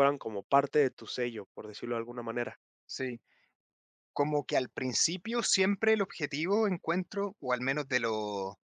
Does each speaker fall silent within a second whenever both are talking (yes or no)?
yes